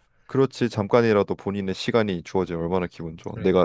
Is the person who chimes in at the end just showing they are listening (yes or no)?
yes